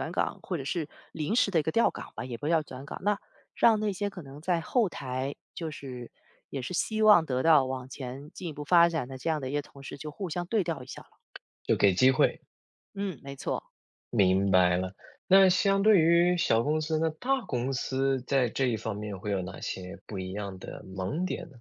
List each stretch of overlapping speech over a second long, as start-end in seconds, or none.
none